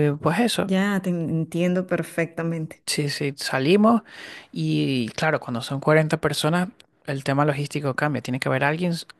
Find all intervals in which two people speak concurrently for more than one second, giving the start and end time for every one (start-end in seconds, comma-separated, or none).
none